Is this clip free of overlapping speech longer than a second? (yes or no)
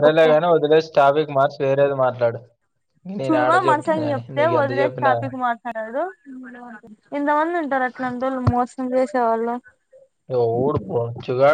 no